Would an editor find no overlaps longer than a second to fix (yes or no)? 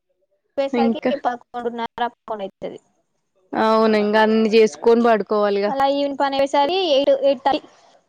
yes